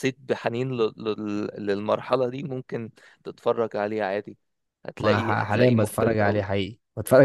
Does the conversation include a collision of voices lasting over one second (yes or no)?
yes